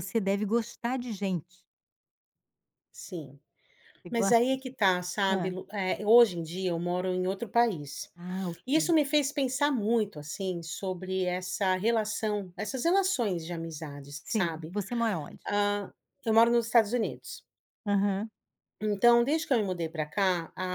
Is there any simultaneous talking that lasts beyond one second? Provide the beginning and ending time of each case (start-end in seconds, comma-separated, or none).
none